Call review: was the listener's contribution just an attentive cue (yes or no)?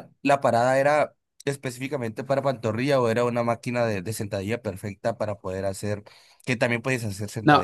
no